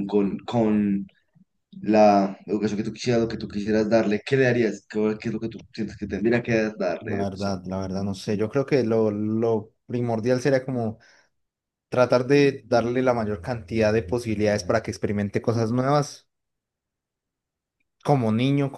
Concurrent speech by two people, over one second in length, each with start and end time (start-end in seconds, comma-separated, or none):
none